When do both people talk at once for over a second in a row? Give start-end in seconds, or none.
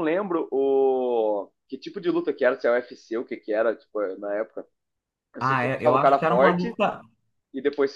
5.4-6.7